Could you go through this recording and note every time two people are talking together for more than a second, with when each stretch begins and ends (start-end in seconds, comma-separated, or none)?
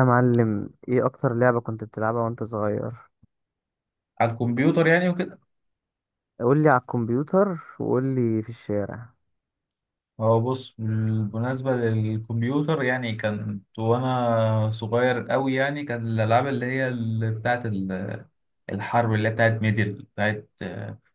none